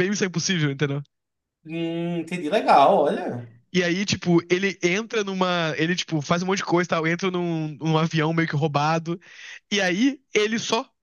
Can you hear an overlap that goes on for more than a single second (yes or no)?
no